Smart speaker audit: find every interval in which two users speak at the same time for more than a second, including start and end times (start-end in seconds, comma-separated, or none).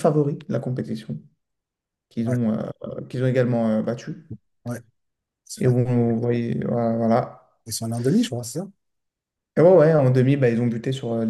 none